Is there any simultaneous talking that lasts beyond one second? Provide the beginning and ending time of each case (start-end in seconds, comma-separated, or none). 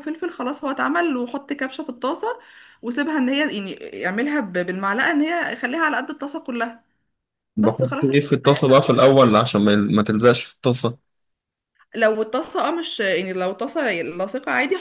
7.6-9.2